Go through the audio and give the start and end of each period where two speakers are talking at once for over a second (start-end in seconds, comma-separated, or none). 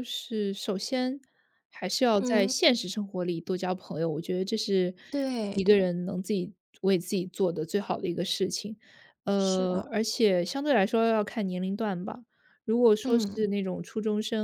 none